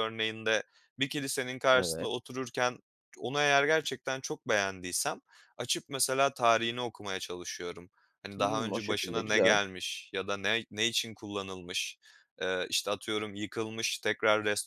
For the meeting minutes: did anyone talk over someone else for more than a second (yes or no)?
yes